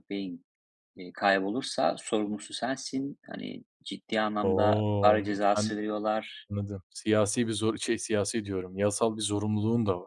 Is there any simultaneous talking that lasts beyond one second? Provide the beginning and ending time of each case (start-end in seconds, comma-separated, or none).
4.4-5.8